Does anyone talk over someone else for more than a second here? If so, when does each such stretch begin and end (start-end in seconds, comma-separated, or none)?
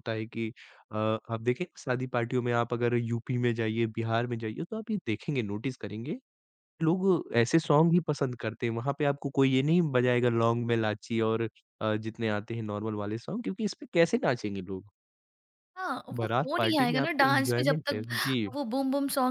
16.2-18.0